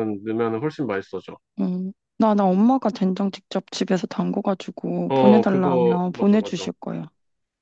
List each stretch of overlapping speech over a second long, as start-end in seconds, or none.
5.1-6.7